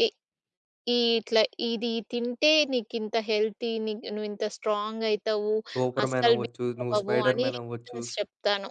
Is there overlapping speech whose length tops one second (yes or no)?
yes